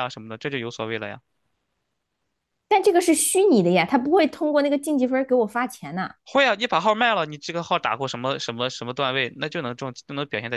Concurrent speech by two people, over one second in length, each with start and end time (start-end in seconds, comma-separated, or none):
none